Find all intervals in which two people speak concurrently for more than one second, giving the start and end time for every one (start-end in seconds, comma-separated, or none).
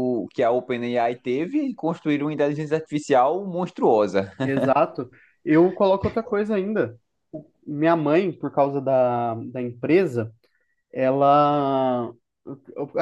none